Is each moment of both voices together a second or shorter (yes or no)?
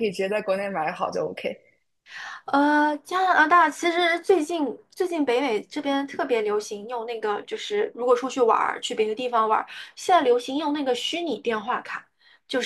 yes